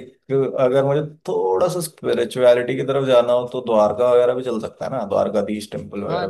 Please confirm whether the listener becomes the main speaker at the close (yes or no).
yes